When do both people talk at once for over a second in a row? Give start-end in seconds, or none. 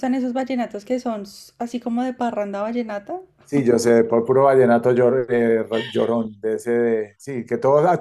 none